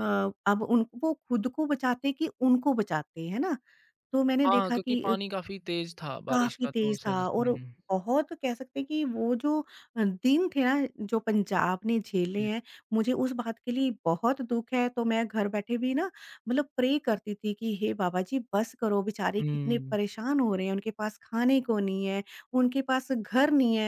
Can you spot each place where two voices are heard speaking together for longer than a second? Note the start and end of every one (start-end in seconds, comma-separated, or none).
6.3-7.7